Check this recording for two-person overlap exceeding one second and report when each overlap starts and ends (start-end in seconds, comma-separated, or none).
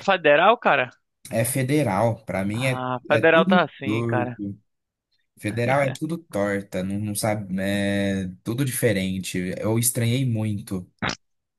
2.5-4.4